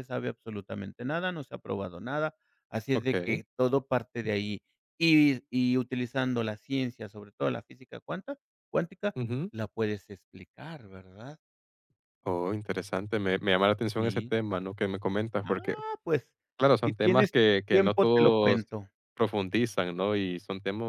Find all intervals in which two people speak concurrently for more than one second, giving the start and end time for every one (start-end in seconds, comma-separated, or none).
16.8-18.7